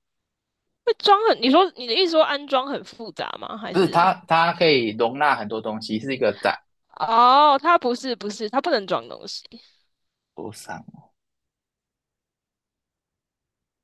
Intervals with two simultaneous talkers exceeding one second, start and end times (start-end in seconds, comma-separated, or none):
none